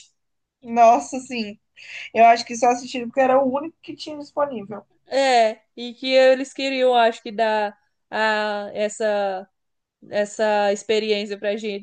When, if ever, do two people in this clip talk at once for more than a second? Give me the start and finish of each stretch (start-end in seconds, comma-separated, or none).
none